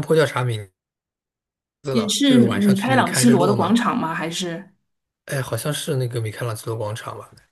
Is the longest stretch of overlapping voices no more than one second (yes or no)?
no